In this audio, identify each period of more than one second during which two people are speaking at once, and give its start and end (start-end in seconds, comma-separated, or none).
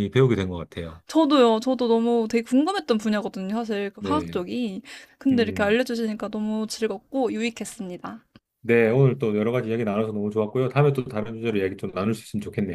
none